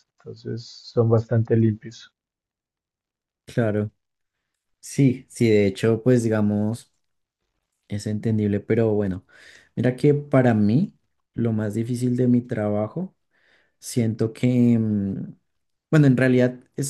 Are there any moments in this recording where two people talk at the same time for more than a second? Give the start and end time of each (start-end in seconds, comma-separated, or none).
none